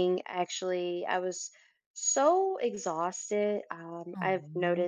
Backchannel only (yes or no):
yes